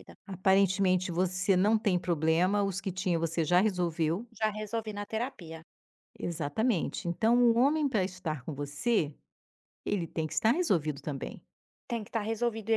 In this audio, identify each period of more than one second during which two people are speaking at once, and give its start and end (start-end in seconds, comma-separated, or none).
none